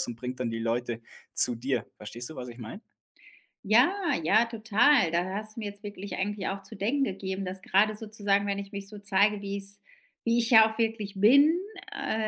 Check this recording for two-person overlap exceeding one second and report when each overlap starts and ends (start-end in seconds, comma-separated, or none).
none